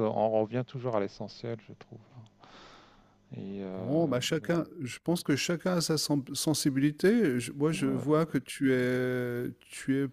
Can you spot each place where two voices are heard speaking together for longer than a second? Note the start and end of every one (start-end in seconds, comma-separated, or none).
none